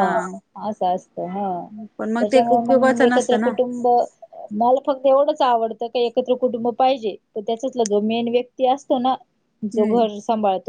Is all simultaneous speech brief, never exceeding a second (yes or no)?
no